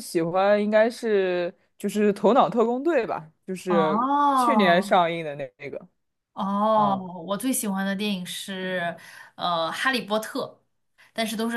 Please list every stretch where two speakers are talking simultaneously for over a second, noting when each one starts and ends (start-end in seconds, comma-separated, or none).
3.7-5.0